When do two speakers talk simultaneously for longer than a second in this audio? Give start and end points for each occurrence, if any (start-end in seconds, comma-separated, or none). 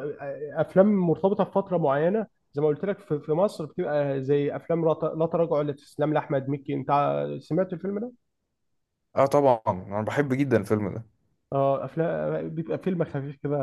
none